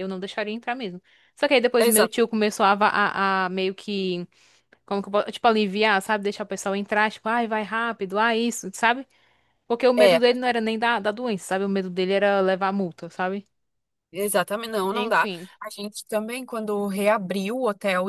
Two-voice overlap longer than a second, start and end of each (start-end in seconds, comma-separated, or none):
none